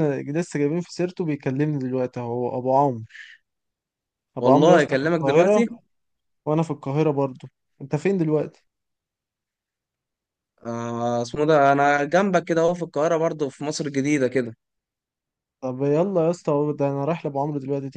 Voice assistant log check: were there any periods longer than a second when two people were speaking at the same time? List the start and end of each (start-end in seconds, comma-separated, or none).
4.4-5.6